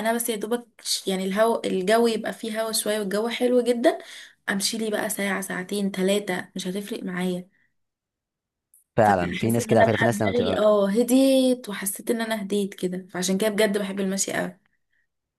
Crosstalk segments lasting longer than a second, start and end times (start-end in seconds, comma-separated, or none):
9.0-10.7